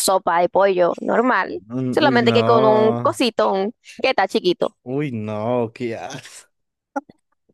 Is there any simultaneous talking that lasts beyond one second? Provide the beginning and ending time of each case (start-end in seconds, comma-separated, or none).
1.7-3.2